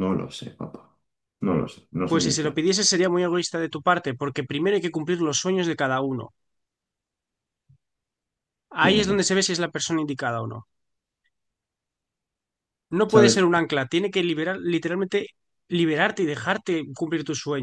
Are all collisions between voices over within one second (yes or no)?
yes